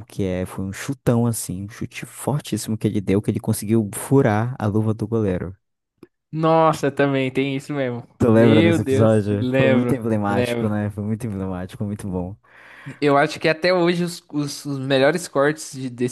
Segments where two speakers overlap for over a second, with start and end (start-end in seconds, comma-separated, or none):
8.2-10.7